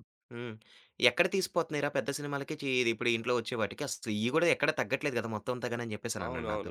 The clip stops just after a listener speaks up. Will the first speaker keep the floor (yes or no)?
no